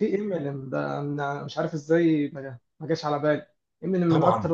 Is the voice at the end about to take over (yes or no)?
no